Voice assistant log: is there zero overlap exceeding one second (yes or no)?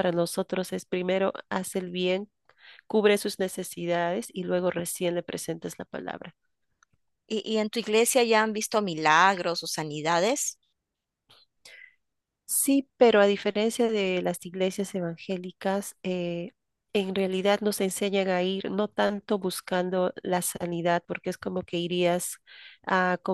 yes